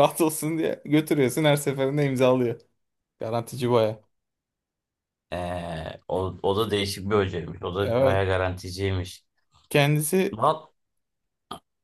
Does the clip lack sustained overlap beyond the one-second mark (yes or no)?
yes